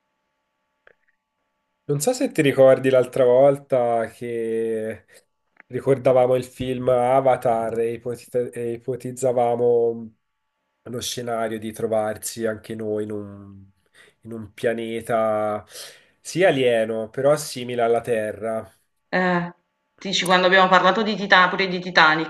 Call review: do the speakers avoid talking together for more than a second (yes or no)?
yes